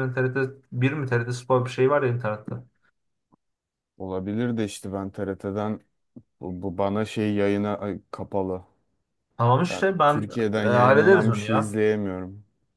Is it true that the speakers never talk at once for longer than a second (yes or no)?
no